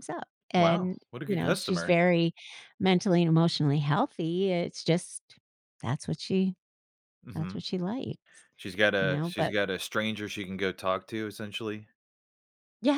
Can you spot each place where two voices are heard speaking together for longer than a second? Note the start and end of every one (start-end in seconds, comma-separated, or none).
0.6-1.9